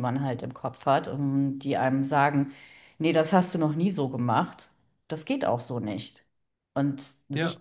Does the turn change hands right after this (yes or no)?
no